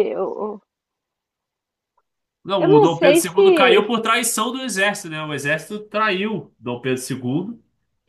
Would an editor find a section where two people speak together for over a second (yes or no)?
yes